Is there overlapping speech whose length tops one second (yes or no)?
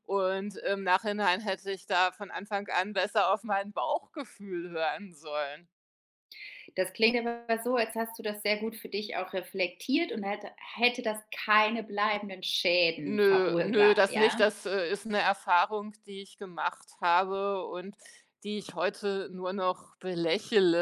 yes